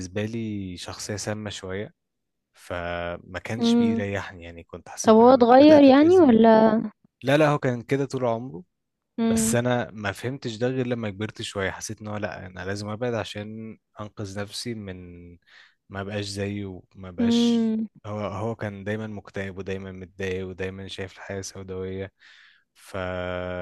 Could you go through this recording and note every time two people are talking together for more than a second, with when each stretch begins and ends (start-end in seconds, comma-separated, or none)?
5.1-6.4